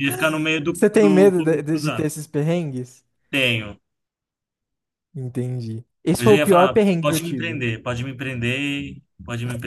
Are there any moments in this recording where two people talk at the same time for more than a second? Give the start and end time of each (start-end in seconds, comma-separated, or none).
0.7-2.1, 6.2-7.6